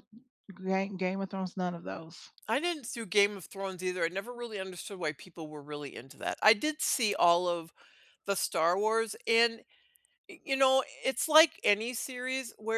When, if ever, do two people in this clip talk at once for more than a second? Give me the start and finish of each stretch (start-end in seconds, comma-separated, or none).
none